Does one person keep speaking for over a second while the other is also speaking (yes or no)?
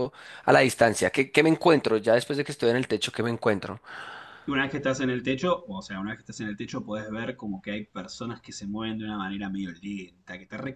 no